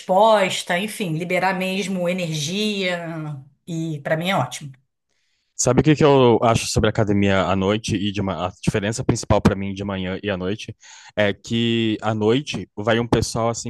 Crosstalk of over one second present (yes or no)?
no